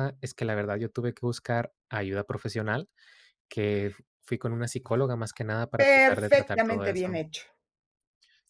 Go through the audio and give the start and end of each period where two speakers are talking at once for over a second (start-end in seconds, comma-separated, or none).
5.7-7.2